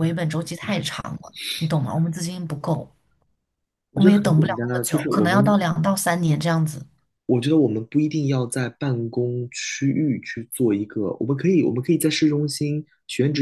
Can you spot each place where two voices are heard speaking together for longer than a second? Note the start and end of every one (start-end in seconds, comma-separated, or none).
3.9-5.6